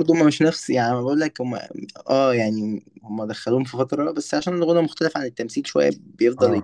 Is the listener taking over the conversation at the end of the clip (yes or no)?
yes